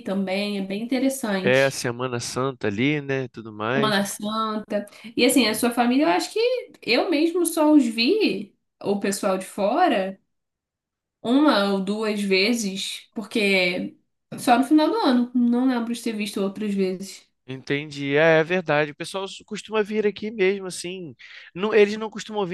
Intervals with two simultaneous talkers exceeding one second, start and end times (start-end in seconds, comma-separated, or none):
none